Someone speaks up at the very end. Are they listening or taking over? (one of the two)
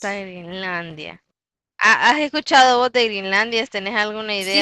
taking over